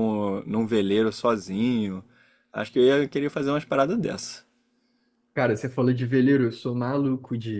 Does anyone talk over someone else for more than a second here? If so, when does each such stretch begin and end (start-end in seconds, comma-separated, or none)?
none